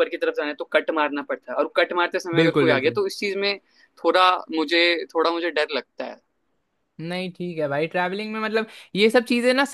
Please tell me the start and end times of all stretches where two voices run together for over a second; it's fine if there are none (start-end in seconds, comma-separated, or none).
none